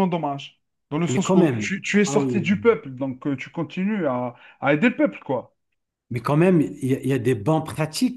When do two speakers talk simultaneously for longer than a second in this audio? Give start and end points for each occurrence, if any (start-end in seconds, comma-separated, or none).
1.1-2.7